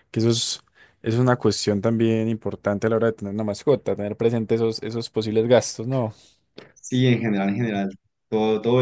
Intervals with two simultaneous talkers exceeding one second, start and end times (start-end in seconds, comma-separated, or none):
none